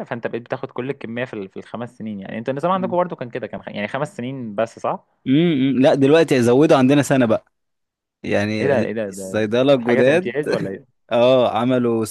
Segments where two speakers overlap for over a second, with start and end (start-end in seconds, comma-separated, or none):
8.6-10.3